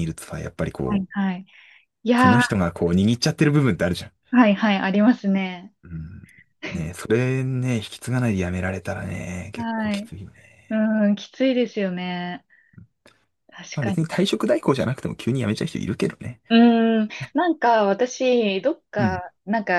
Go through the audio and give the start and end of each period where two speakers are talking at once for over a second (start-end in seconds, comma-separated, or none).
none